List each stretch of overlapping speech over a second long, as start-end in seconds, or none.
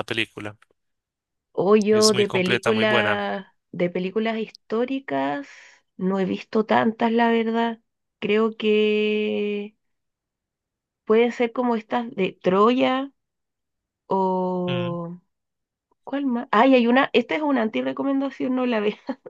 1.9-3.2